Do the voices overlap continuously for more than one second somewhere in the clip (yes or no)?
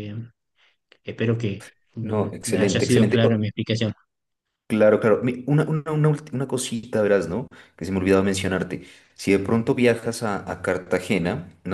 yes